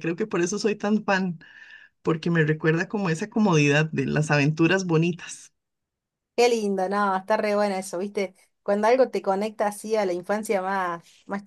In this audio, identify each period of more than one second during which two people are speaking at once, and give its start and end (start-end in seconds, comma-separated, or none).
none